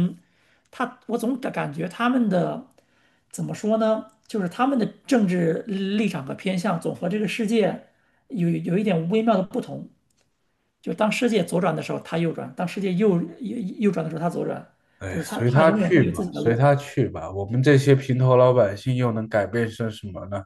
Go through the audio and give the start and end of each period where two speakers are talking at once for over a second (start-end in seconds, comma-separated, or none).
15.1-16.6